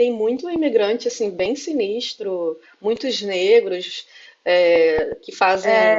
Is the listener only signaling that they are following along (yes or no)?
yes